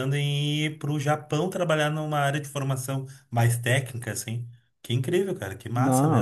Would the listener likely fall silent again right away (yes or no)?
no